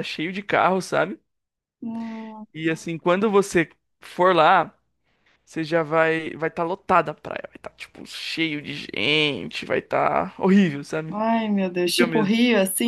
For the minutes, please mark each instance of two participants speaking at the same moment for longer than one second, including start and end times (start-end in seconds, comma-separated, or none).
none